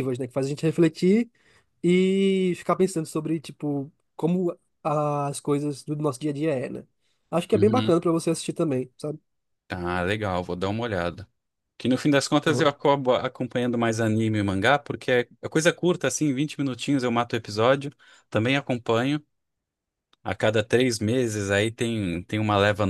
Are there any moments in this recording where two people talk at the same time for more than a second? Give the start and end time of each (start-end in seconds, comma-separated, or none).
none